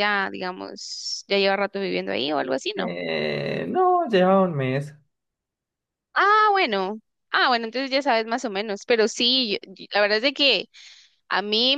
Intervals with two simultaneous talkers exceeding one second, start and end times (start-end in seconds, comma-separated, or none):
none